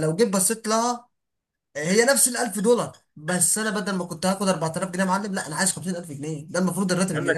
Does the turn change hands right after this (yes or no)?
yes